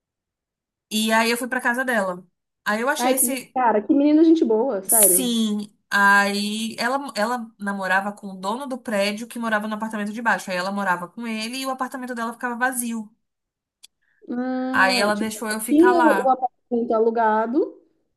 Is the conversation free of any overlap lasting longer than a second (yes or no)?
no